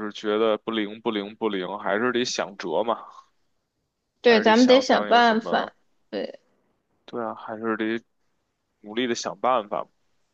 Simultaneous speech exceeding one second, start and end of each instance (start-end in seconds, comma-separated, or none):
4.2-5.7